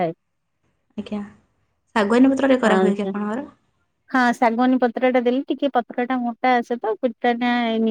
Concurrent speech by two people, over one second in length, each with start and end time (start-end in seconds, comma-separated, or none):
none